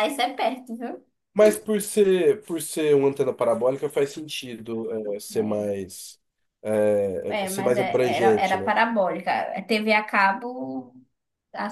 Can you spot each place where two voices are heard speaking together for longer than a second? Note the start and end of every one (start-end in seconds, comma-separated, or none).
7.3-8.7